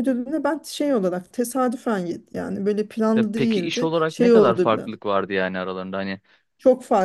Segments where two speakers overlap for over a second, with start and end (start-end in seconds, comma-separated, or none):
3.1-4.9